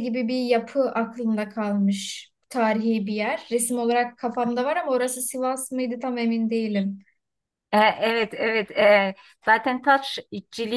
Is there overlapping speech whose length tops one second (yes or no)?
no